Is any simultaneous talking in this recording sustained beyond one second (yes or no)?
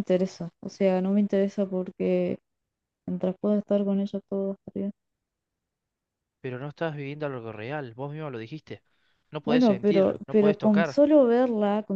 yes